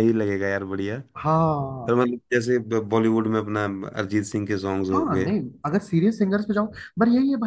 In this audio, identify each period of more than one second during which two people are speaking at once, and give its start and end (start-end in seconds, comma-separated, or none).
none